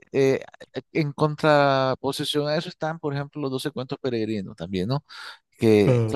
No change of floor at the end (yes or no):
yes